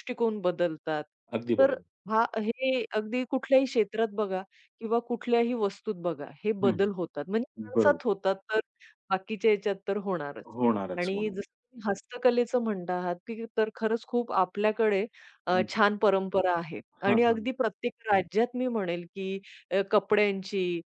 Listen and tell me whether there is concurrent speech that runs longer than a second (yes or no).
no